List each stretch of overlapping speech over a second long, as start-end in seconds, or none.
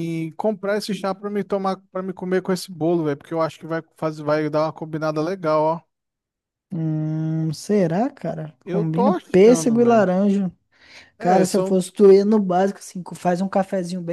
8.7-10.1